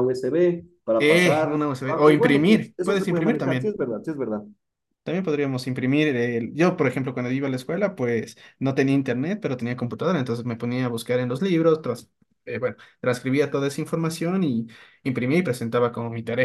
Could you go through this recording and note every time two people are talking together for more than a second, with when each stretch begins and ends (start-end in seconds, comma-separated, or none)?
1.0-3.8